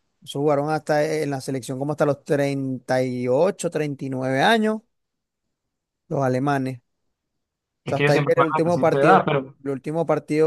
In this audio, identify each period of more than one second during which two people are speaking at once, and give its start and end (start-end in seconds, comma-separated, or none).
7.9-9.5